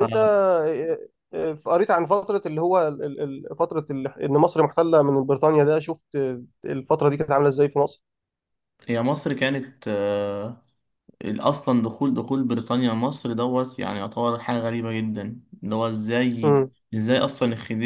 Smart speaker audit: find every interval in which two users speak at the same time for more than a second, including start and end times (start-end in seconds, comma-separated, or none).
none